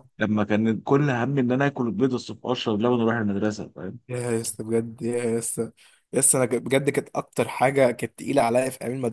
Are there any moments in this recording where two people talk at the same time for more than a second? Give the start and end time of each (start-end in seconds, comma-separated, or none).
none